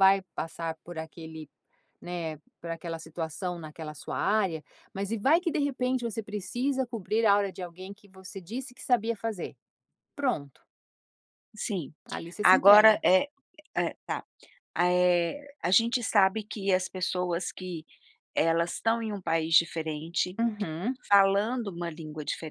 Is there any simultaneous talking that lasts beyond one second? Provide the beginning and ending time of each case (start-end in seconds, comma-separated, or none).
none